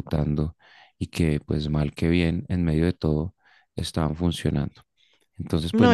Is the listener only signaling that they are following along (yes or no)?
no